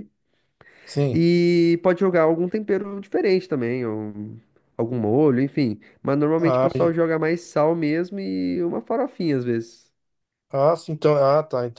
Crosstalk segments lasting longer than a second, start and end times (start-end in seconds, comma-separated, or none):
none